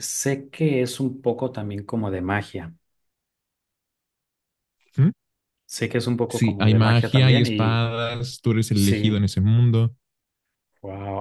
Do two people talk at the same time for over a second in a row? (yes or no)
yes